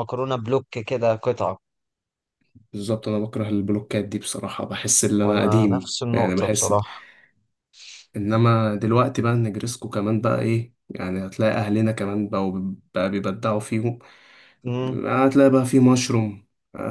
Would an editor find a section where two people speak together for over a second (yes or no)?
yes